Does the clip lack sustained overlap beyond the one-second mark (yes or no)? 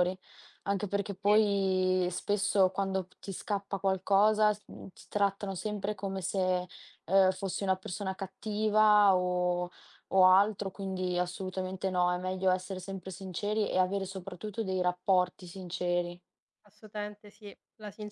yes